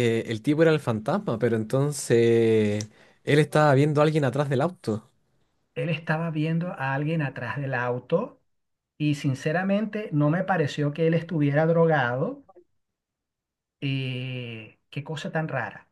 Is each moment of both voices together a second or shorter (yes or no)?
yes